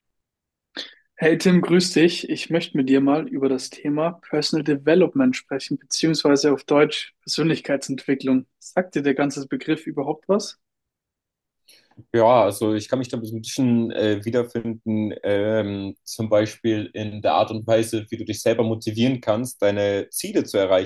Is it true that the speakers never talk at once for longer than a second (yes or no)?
yes